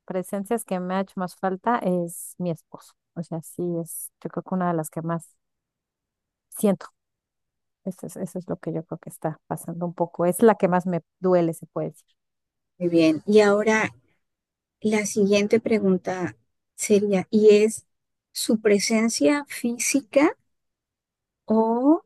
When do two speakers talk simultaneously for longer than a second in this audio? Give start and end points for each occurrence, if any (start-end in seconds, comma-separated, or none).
none